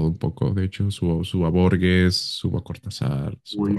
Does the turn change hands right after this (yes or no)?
yes